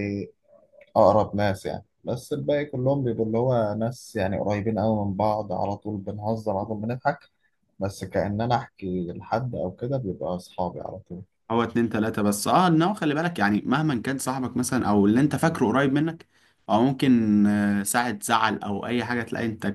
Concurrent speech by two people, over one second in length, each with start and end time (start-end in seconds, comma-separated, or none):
none